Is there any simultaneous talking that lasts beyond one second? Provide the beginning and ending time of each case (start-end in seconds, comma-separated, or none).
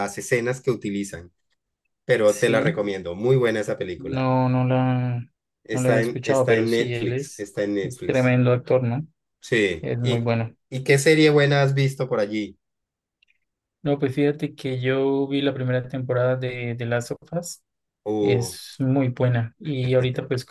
5.7-8.4